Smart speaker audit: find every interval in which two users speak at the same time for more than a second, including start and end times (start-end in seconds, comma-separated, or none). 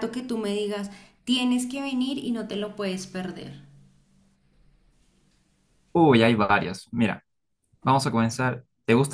none